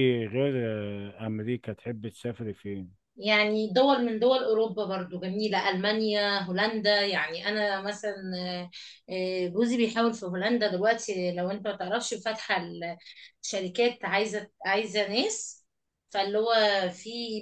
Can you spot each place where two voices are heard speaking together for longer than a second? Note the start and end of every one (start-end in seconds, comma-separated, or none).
none